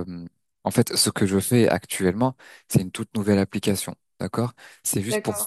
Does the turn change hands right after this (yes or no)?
no